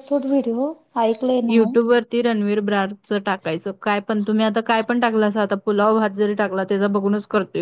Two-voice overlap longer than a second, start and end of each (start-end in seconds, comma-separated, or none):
none